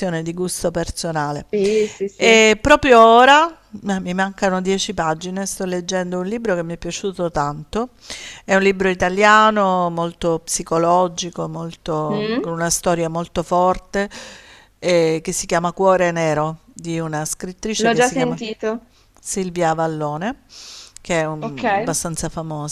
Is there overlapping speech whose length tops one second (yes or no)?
no